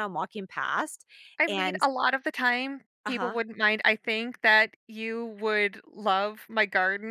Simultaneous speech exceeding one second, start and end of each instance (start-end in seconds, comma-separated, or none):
none